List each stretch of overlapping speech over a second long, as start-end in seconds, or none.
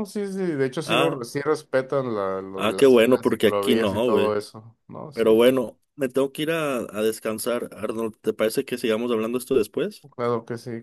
2.6-4.4